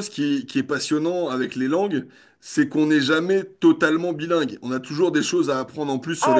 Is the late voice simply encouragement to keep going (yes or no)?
no